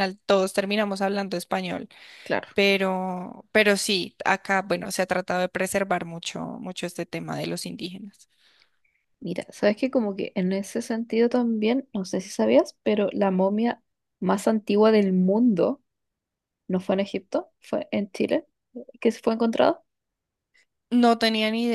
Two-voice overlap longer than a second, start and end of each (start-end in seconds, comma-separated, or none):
none